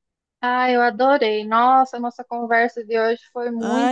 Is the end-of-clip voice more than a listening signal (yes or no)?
yes